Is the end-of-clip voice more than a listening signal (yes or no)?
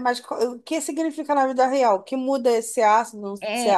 yes